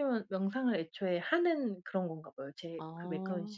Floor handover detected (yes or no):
yes